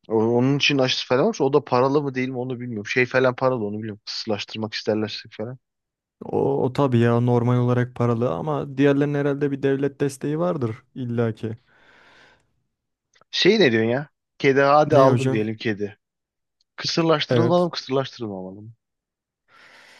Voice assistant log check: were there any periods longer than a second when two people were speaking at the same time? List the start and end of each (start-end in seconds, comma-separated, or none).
none